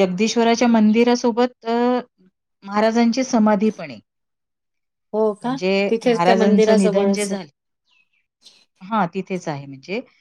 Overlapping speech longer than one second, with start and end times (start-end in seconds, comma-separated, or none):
5.4-7.4